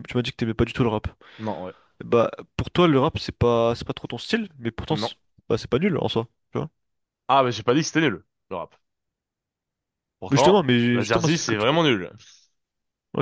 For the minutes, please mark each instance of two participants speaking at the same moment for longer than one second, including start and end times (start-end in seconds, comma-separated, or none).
10.3-11.8